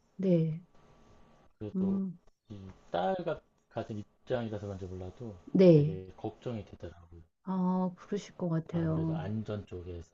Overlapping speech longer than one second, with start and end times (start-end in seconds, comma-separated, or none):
none